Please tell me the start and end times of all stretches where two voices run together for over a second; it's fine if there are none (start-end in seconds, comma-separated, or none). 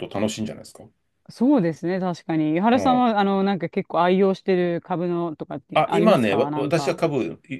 5.7-7.0